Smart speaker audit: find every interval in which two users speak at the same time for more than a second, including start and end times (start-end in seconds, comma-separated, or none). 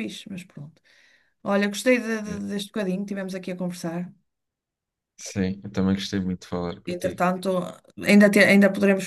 none